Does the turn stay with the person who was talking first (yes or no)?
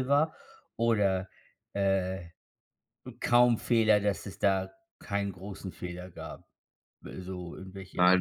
no